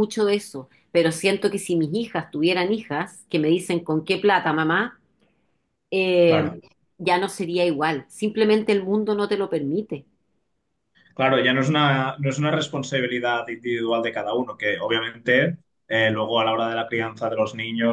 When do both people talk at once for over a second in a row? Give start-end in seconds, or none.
none